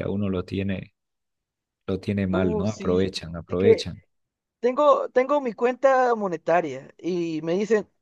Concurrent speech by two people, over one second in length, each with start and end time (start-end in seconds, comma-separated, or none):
2.3-3.9